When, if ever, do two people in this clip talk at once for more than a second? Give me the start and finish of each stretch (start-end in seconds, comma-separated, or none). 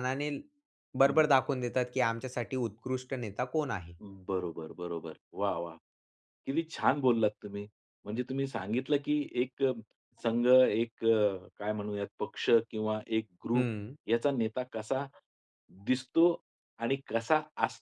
none